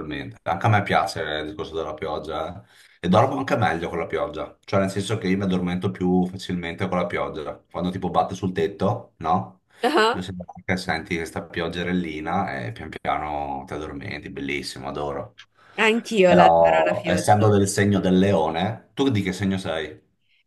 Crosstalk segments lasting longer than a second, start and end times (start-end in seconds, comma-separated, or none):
16.2-17.5